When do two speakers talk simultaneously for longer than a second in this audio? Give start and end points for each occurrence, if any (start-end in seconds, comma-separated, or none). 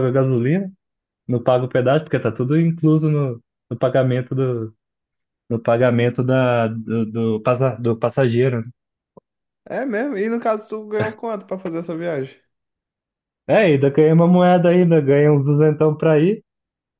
none